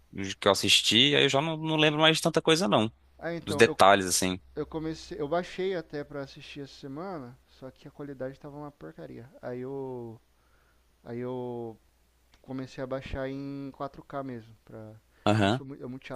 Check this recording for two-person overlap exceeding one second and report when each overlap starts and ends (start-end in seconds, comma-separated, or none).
none